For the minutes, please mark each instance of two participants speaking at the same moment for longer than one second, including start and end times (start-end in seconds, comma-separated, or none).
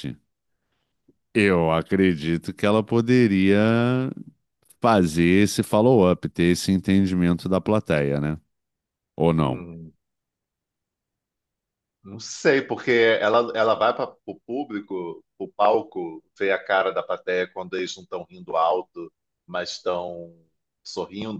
none